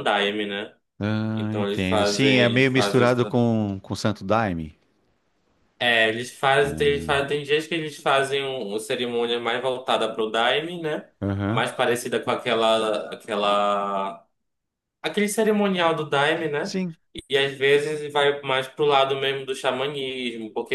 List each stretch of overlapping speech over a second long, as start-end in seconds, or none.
1.4-3.3